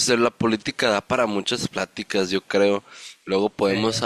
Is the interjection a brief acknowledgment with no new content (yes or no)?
yes